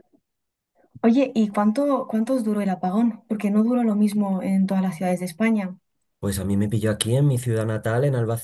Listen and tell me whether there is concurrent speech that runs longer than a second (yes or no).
no